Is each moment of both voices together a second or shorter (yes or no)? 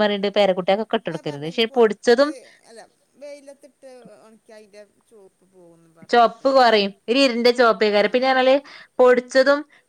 yes